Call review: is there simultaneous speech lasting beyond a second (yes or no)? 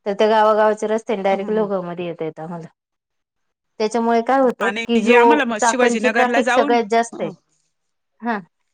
yes